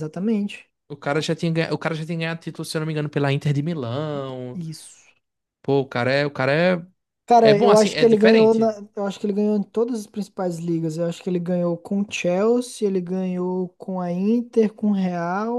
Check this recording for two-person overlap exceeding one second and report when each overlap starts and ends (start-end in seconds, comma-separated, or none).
7.4-8.7